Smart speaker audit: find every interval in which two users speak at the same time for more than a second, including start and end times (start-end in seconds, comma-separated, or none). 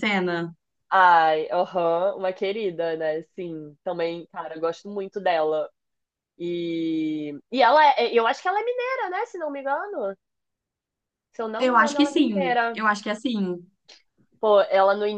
11.6-12.8